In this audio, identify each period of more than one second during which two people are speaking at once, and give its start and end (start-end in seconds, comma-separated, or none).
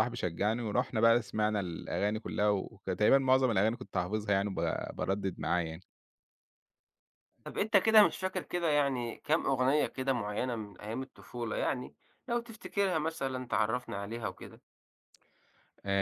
none